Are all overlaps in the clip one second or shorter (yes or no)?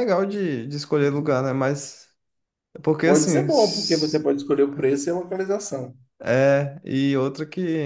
no